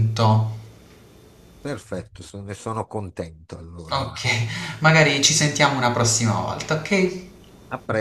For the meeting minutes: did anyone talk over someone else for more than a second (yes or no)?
no